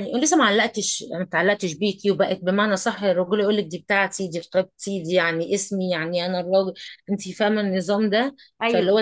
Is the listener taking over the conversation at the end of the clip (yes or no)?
no